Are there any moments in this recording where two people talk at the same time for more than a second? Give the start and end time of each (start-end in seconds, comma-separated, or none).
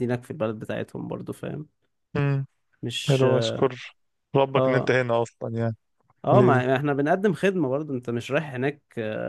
none